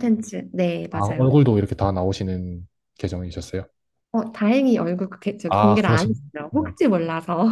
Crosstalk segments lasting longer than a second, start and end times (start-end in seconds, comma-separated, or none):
5.5-6.8